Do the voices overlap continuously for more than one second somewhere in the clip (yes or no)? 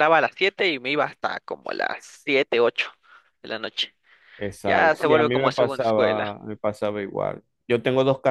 yes